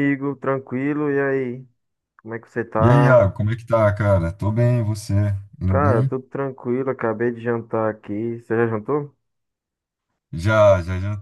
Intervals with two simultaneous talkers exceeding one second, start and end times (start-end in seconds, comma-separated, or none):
none